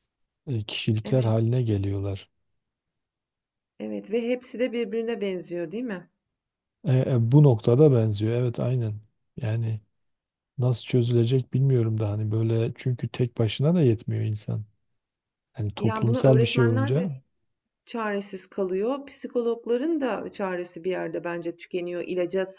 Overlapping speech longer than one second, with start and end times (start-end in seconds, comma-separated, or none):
15.8-17.1